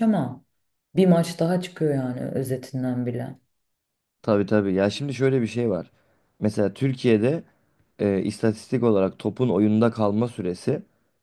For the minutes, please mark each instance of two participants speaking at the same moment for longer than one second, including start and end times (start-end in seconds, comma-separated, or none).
none